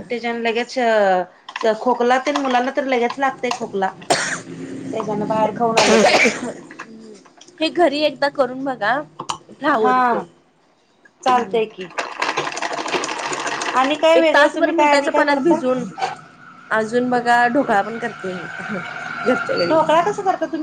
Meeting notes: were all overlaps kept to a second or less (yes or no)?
no